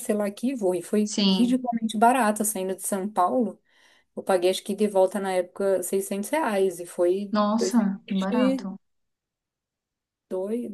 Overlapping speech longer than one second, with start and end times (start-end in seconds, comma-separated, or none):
7.3-8.7